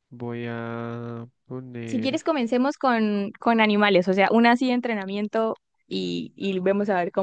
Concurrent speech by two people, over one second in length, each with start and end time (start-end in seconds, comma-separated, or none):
none